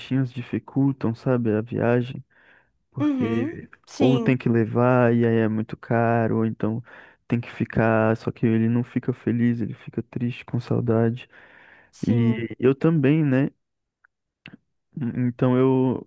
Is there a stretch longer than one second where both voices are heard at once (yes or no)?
yes